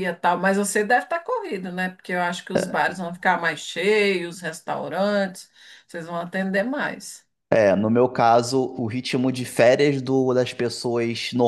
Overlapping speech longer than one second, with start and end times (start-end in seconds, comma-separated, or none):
none